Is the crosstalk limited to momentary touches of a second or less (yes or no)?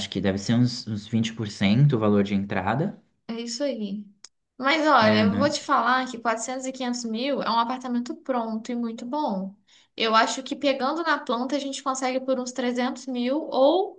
yes